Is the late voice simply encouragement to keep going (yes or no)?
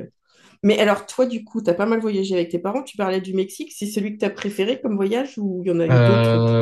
no